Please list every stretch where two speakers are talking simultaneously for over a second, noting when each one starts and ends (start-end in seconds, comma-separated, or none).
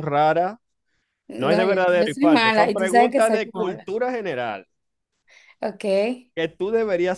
1.4-3.9